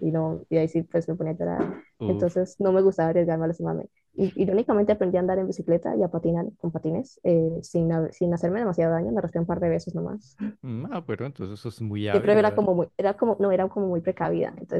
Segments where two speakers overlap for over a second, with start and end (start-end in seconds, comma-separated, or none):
none